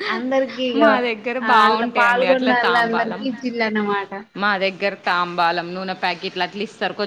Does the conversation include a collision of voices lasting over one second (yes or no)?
yes